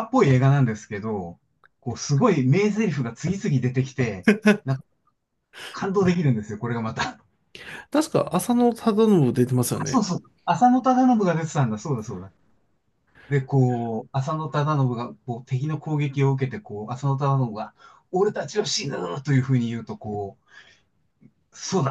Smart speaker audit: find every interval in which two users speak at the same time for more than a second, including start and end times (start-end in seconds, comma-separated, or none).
none